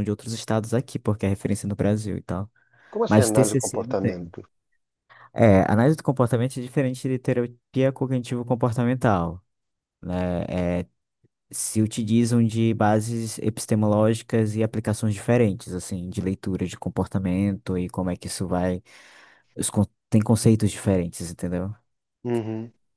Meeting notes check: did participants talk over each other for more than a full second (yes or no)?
yes